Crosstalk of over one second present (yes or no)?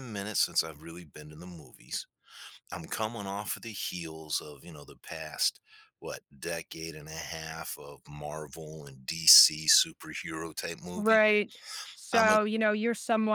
no